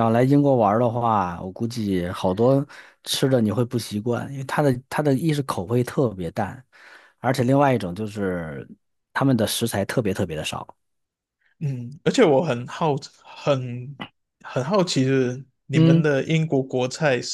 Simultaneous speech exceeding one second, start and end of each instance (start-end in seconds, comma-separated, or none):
none